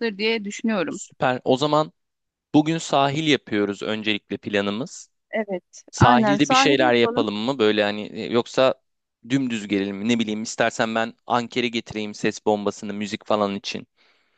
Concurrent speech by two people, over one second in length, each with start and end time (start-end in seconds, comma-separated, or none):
5.9-7.3